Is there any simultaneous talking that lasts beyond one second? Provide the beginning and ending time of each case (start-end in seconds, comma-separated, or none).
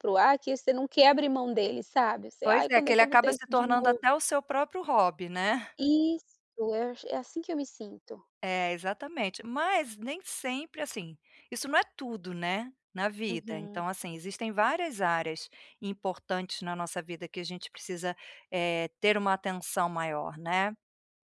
2.4-4.0